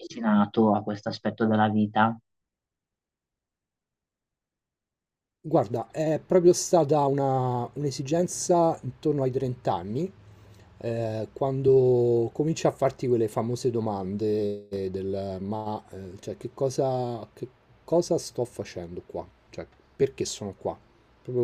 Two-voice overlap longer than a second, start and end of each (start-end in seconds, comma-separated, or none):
none